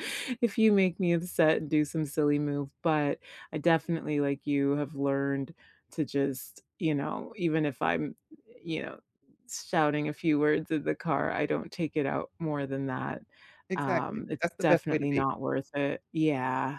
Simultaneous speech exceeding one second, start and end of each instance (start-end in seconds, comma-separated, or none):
13.8-15.2